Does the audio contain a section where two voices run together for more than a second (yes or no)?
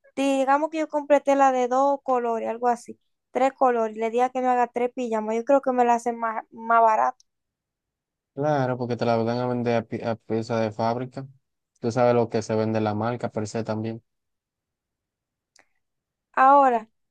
no